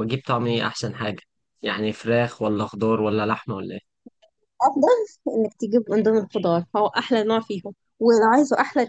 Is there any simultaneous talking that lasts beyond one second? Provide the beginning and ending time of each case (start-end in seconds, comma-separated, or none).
none